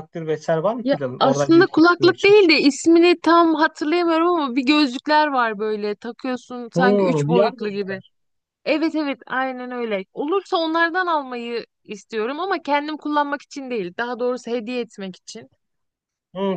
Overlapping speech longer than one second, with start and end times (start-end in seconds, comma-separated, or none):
0.8-2.4, 6.7-8.0